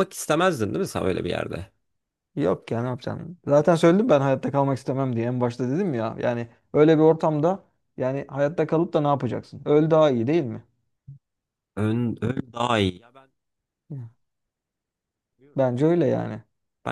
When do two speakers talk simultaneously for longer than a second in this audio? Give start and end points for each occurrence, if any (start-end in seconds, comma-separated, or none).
none